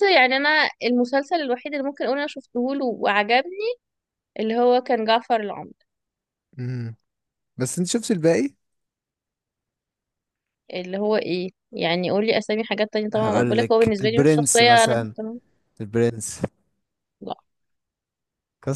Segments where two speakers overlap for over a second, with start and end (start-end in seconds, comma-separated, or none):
13.2-15.1